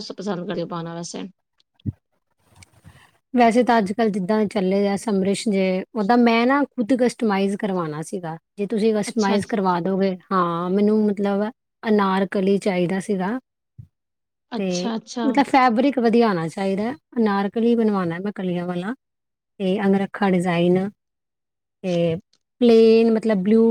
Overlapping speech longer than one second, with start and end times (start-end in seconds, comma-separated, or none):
none